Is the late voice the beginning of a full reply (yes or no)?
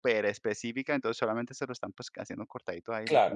yes